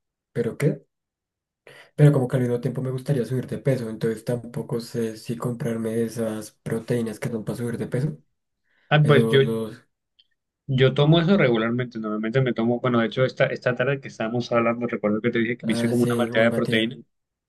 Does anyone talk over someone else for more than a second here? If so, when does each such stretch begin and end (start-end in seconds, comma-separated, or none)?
15.6-16.9